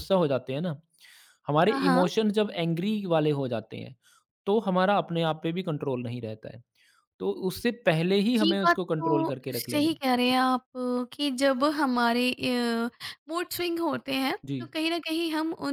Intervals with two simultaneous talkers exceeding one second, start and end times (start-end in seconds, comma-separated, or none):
8.4-10.3